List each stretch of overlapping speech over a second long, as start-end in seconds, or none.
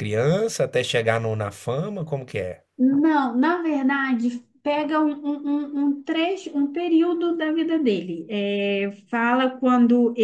none